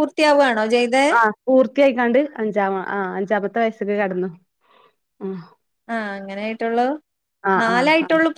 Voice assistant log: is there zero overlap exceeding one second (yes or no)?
yes